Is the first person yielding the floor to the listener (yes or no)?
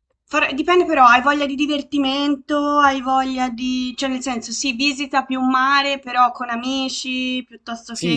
yes